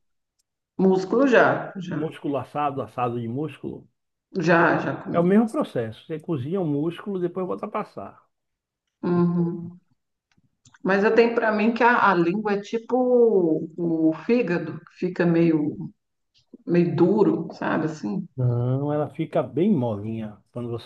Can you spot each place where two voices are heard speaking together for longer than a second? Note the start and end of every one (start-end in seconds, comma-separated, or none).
none